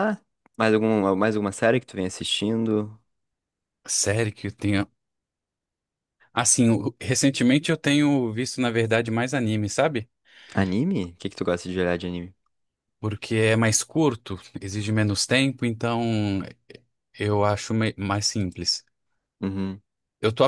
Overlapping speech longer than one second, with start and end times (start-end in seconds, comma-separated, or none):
none